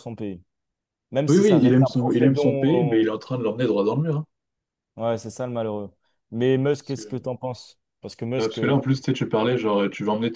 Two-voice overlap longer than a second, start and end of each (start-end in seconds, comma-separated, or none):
1.3-3.1